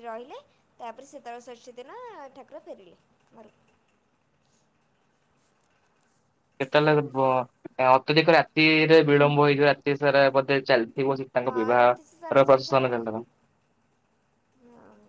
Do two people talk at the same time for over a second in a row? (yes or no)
yes